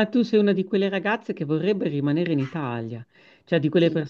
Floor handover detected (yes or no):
no